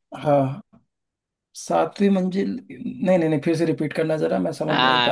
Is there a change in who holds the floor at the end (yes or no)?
yes